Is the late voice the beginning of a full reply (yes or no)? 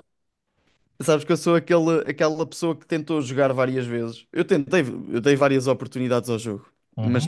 no